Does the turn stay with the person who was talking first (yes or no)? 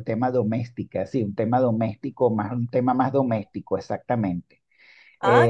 no